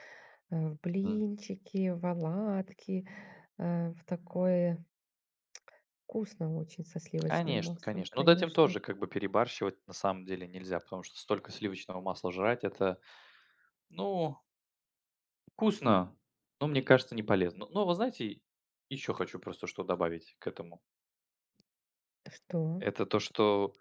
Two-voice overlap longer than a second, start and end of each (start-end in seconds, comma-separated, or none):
7.3-8.8